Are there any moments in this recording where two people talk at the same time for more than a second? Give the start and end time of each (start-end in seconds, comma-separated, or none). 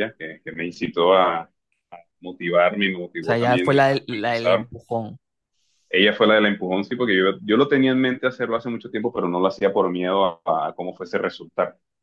3.2-4.7